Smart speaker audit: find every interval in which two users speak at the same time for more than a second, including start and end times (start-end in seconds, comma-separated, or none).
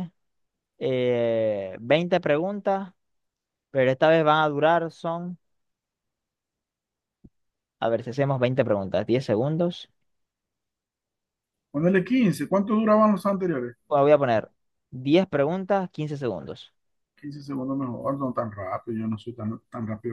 none